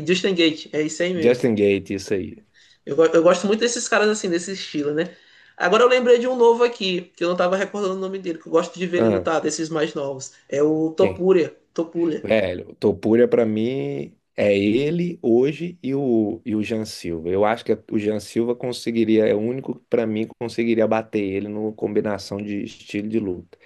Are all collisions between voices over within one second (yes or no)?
yes